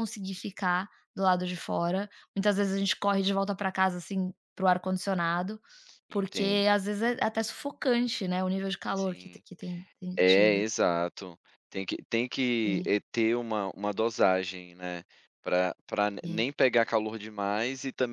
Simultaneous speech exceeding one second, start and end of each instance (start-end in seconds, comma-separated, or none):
none